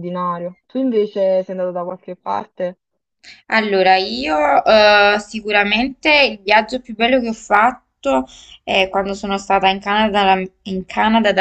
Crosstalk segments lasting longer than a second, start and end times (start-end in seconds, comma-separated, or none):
none